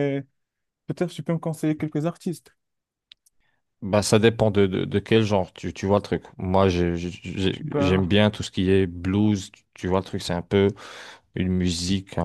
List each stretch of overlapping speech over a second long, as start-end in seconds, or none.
none